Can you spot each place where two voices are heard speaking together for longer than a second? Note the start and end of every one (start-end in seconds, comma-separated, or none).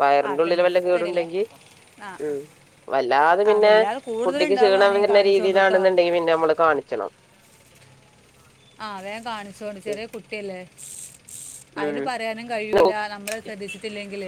4.3-5.8